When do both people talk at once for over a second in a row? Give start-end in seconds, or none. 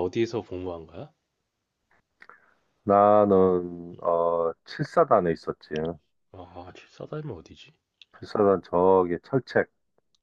none